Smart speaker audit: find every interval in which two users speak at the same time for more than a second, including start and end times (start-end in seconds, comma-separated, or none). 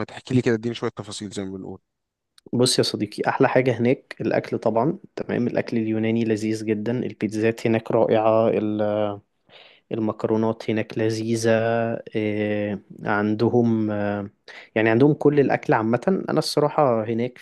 none